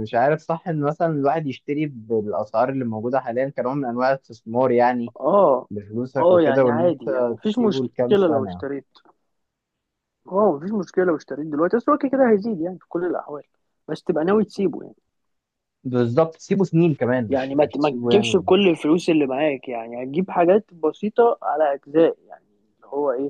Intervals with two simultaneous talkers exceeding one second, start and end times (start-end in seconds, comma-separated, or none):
6.2-8.6, 17.3-18.5